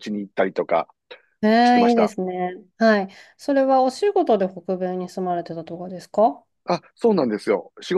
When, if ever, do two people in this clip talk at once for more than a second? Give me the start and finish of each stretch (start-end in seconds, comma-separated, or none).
none